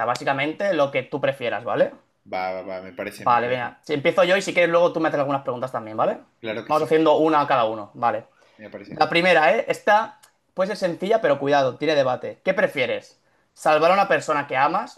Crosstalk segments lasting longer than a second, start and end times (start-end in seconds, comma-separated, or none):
none